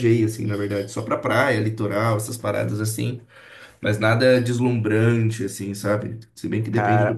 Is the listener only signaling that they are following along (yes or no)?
no